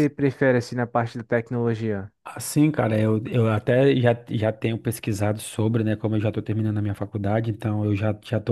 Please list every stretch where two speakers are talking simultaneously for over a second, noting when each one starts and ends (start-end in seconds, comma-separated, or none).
none